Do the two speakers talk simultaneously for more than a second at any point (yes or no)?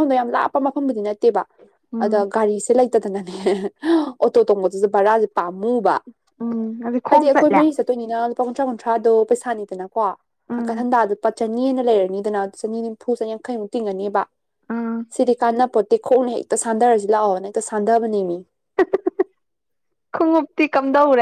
no